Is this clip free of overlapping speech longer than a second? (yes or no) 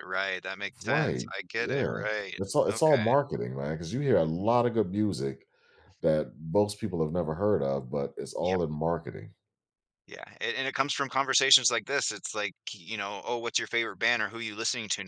no